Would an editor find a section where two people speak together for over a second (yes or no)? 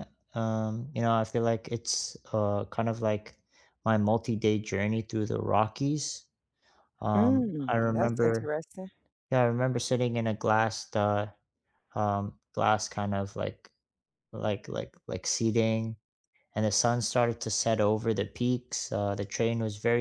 yes